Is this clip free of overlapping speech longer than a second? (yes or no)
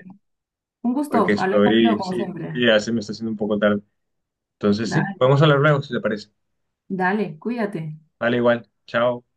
no